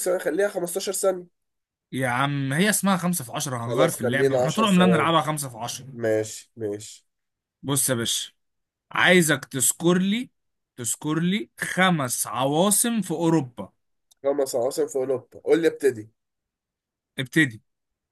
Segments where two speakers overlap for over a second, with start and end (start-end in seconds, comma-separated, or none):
3.6-5.1